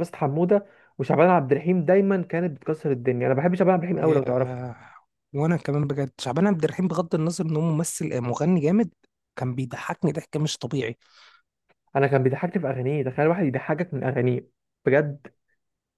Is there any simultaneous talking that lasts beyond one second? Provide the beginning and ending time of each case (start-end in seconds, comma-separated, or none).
none